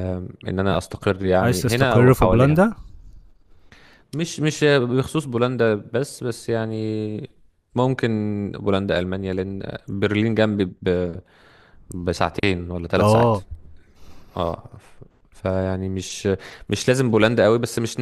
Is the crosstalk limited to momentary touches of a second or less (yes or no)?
no